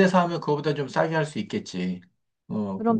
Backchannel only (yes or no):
no